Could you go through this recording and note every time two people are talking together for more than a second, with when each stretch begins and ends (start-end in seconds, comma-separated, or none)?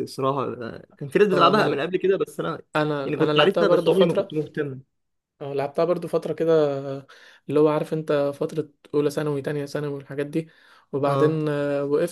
3.0-4.3